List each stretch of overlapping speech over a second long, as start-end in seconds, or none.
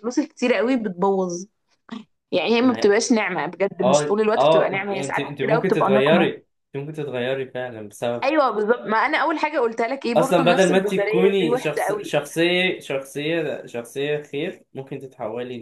3.8-6.3, 10.2-12.3